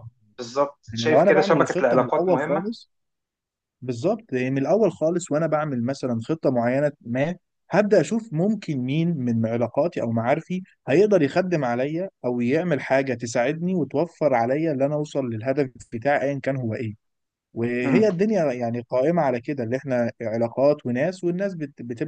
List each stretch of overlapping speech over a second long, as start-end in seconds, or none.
0.9-2.7